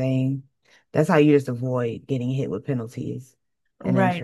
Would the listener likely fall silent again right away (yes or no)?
no